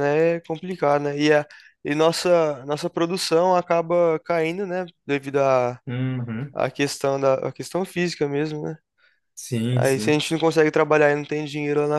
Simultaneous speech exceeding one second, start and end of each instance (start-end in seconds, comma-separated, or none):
none